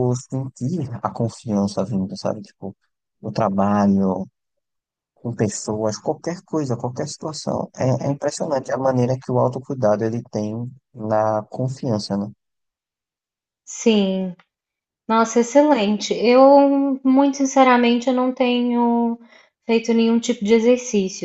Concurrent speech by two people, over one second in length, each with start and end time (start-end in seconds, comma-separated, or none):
none